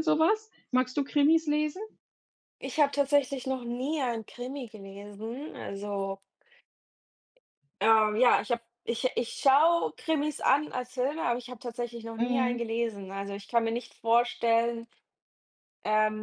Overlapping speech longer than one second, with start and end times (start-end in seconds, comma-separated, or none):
none